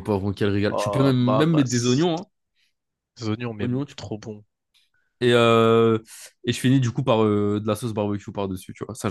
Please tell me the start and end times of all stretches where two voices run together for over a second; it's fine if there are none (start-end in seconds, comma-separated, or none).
0.7-2.2